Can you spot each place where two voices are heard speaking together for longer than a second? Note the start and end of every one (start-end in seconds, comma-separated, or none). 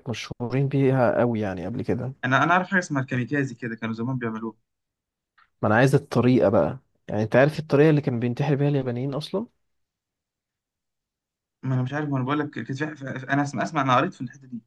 none